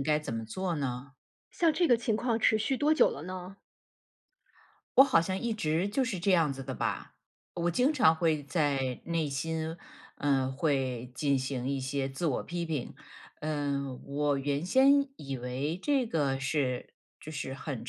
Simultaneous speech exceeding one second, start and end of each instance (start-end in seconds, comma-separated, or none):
none